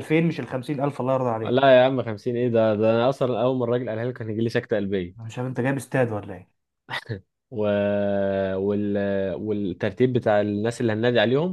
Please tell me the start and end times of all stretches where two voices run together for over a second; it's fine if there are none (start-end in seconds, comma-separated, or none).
none